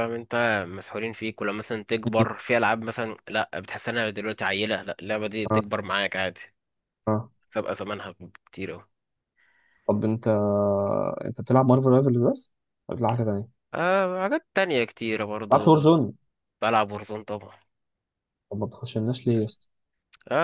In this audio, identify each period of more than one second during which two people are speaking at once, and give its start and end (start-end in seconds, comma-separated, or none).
none